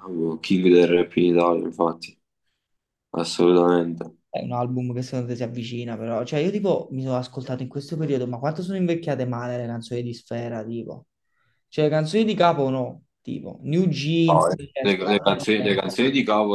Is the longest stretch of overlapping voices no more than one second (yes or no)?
no